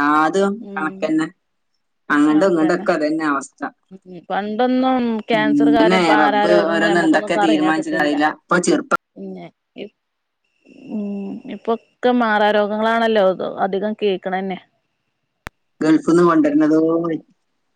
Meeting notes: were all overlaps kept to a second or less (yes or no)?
no